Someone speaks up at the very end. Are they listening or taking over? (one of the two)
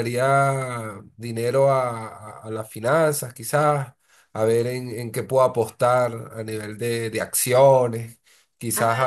listening